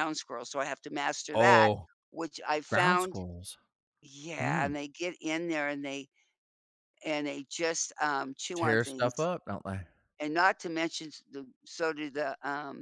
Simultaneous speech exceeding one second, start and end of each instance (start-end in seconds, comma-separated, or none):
none